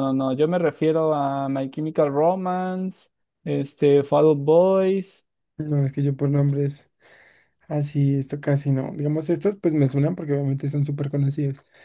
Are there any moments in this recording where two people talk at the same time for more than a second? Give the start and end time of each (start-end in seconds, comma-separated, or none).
none